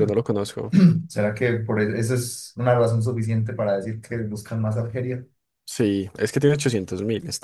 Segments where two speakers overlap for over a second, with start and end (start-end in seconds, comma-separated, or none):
none